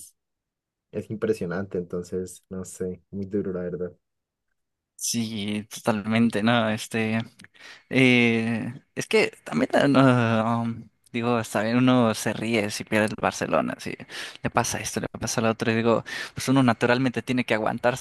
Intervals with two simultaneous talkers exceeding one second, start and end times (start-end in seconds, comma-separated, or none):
none